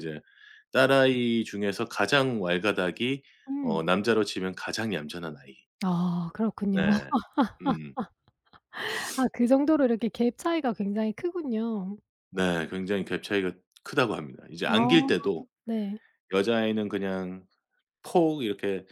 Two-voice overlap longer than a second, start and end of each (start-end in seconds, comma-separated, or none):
none